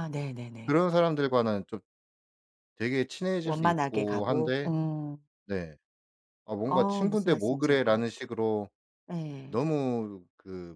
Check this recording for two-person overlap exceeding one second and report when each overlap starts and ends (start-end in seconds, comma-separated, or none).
3.4-4.7, 6.7-8.1